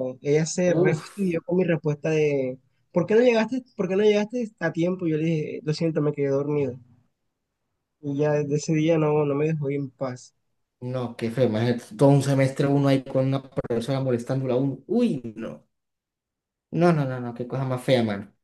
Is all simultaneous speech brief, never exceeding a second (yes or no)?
yes